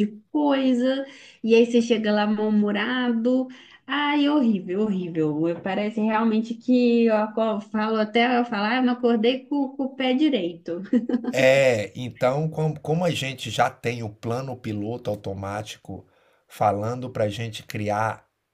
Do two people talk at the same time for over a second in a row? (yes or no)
no